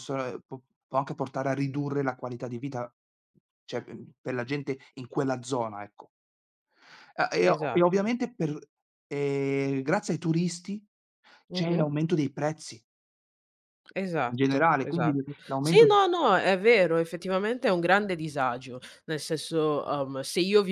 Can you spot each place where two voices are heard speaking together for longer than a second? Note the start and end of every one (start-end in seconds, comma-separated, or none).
14.3-15.9